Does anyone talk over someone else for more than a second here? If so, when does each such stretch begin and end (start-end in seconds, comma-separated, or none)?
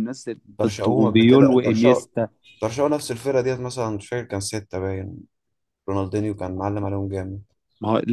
0.6-2.0